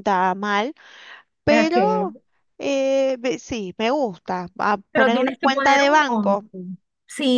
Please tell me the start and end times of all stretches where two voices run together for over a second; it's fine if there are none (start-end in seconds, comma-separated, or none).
4.9-6.4